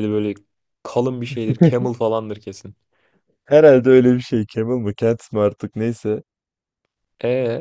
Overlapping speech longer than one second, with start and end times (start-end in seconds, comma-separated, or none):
none